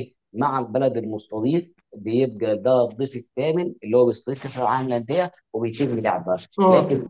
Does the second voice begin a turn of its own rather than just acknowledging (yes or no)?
no